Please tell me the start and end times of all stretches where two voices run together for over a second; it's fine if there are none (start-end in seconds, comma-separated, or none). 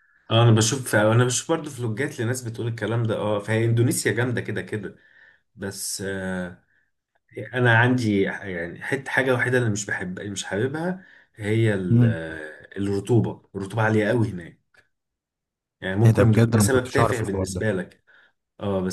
16.1-17.7